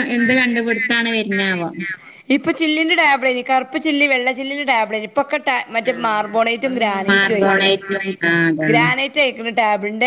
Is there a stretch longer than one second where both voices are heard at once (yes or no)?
no